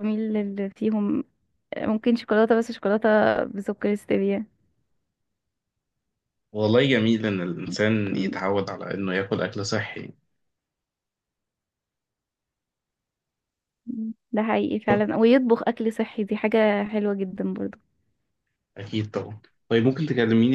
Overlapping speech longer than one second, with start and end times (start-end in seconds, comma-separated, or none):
none